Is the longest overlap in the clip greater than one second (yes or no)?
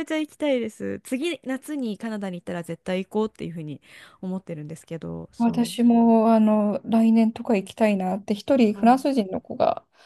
no